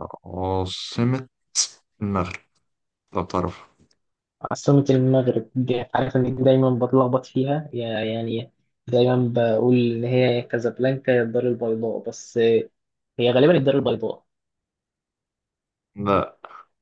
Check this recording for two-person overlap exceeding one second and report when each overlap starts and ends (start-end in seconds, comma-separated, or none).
none